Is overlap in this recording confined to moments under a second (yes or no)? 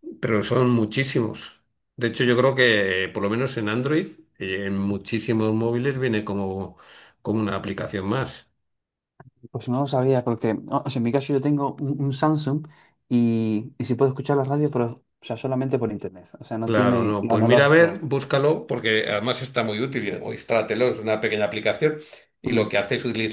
no